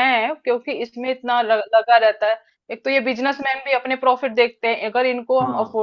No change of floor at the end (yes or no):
yes